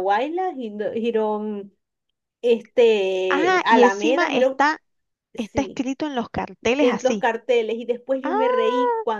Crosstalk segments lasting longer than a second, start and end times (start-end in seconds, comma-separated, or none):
3.3-4.6